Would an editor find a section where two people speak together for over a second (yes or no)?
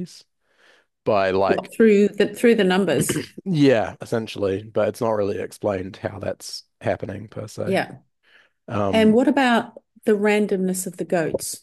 no